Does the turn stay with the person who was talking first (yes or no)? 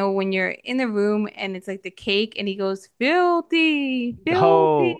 no